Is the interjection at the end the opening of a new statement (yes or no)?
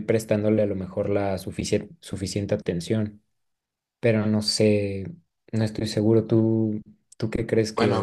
yes